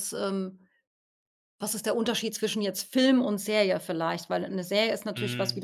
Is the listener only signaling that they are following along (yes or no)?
yes